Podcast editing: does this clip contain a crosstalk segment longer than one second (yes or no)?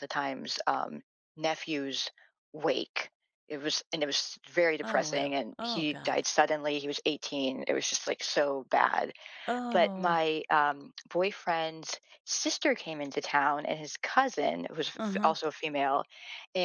yes